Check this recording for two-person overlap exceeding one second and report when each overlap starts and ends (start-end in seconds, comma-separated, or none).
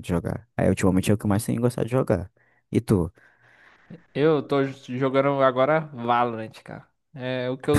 none